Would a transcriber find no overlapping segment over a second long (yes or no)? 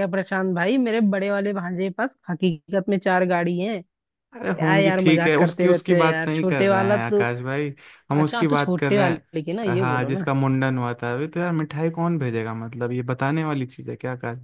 no